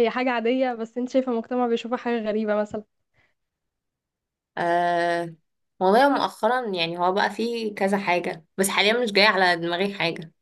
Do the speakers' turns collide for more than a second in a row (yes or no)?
no